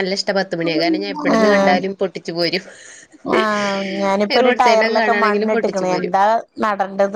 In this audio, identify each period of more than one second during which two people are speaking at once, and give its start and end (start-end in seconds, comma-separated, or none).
4.4-6.1